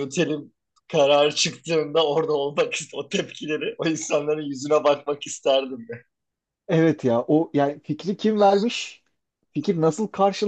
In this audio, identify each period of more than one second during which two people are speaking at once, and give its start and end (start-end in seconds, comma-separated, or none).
none